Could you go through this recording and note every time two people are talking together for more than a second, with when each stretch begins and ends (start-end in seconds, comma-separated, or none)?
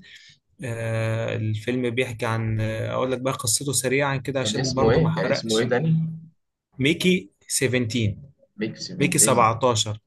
4.4-5.7